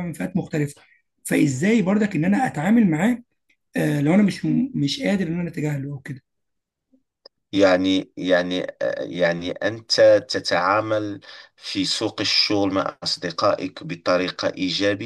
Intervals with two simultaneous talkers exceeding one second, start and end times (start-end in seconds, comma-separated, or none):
none